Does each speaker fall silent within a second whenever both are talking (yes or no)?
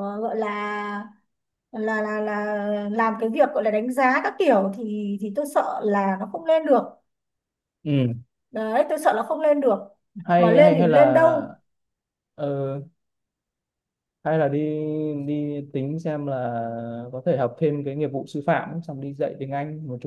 no